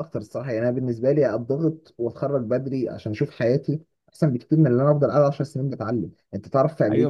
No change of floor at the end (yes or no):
no